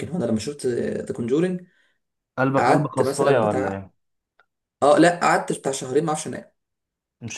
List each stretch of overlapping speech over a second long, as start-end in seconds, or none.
2.6-3.9